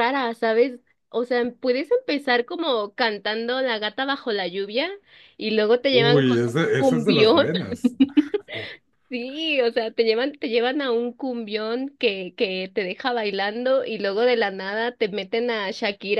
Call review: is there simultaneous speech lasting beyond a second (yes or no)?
yes